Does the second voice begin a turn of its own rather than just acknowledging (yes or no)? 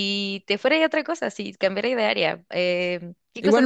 yes